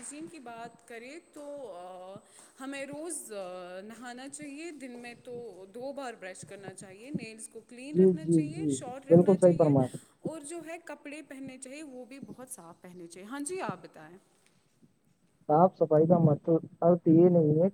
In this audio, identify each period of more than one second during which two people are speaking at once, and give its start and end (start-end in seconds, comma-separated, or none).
7.9-9.7